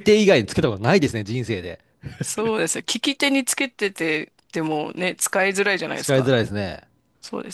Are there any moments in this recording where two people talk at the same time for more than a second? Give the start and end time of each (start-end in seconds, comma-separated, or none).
none